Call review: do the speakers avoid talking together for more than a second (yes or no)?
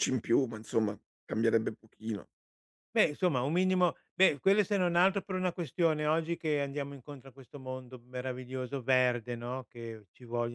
yes